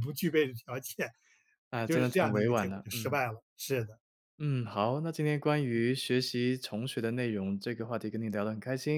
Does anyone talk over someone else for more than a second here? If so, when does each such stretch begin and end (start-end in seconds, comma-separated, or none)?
1.8-3.2